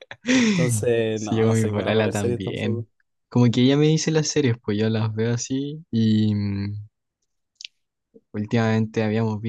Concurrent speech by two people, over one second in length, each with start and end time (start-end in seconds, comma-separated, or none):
1.1-2.9